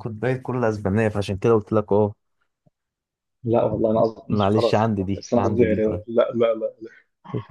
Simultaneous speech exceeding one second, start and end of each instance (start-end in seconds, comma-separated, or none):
4.3-6.0